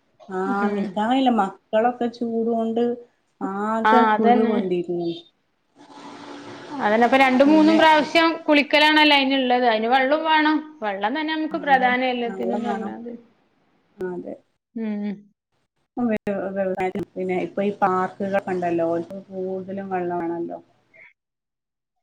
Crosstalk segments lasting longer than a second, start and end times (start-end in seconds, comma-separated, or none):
none